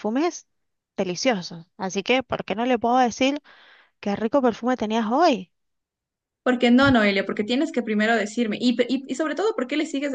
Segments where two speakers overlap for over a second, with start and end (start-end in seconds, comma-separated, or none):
none